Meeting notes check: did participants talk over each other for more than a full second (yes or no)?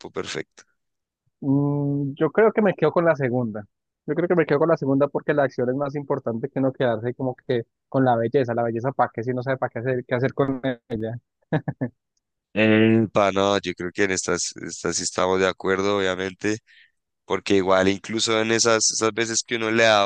no